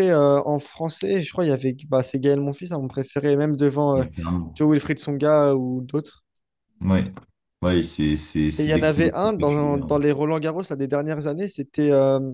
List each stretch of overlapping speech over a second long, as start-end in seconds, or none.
8.6-9.9